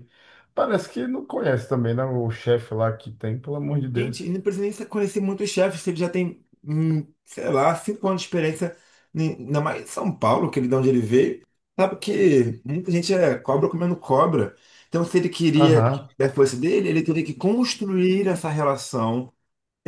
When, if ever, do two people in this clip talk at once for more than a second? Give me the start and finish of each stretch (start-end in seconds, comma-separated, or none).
none